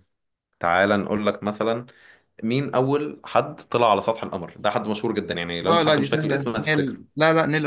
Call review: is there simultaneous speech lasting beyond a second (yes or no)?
yes